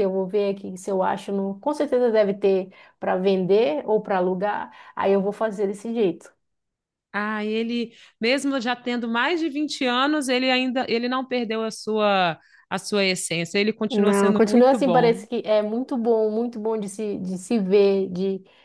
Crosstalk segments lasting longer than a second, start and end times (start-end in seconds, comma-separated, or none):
13.9-15.2